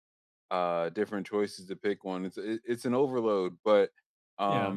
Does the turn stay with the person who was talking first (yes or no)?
yes